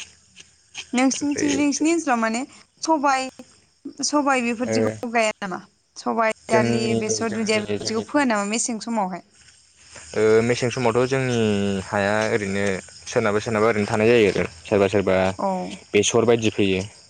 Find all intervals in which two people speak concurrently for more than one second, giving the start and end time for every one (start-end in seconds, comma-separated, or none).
6.5-8.0